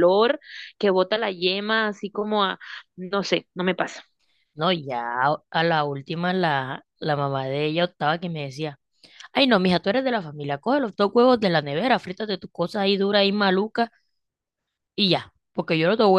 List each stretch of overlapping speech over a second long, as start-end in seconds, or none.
none